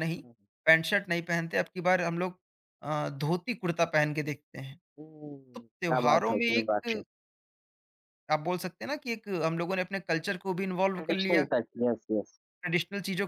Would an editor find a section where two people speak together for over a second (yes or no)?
yes